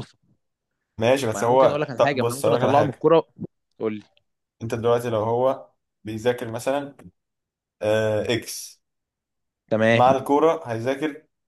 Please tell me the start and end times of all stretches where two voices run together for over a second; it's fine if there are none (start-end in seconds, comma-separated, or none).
1.3-3.1